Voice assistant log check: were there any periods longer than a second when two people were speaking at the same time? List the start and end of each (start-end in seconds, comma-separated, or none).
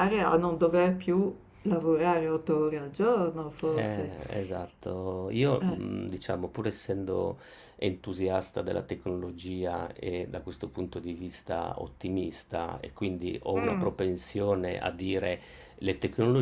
none